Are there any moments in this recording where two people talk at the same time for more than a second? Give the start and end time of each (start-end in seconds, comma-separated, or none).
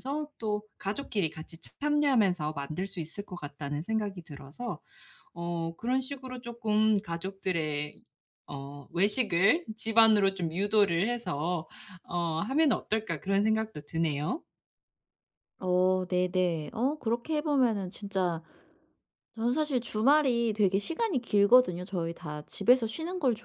none